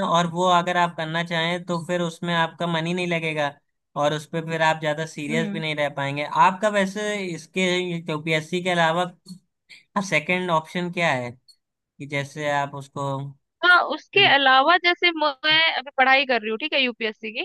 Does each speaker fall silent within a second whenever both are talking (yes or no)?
yes